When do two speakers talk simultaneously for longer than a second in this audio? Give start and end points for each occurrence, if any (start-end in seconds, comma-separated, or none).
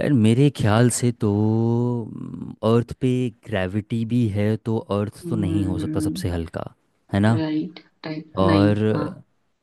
none